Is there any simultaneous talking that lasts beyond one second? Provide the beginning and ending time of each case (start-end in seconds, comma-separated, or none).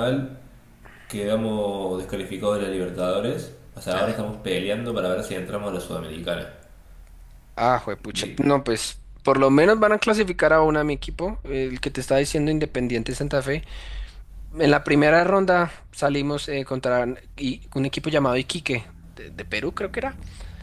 none